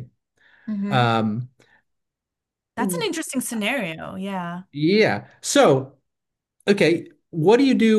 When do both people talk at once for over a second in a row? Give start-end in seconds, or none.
none